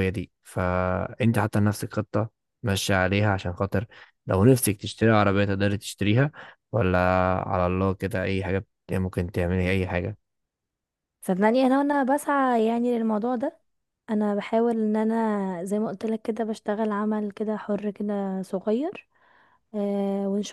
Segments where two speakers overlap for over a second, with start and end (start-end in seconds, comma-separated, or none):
none